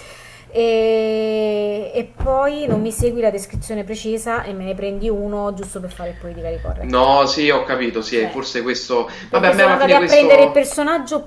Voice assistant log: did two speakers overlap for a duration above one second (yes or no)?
yes